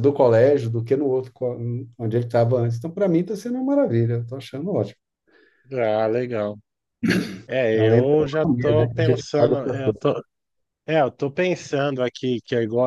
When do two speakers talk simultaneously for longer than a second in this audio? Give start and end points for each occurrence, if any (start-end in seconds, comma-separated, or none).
7.7-10.0